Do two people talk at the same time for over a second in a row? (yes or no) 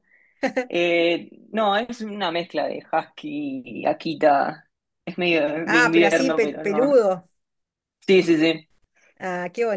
yes